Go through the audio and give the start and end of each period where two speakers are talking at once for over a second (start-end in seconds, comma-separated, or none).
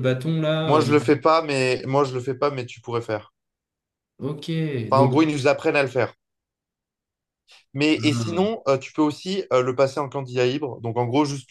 none